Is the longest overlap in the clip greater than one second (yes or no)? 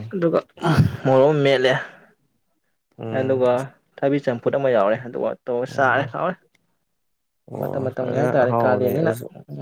yes